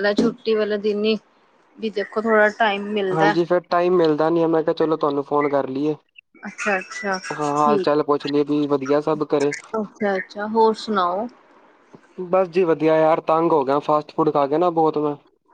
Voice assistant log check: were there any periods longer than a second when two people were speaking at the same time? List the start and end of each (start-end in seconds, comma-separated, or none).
none